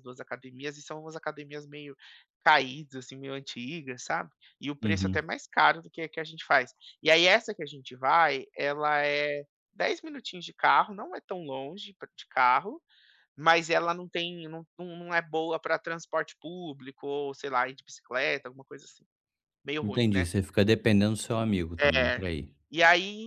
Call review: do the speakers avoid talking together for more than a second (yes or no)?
yes